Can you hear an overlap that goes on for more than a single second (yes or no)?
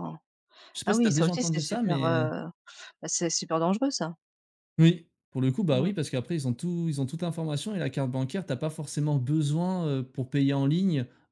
yes